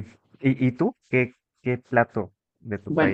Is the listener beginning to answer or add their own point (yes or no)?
yes